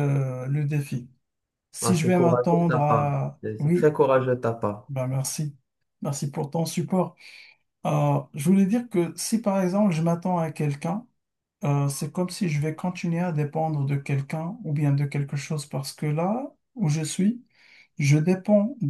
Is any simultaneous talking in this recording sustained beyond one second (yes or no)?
yes